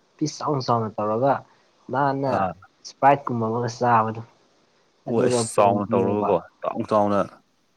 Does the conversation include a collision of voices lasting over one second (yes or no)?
yes